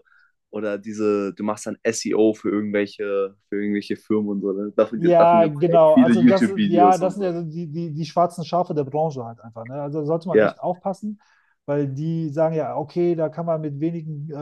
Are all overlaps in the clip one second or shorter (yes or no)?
no